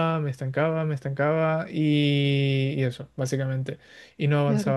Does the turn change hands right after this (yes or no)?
no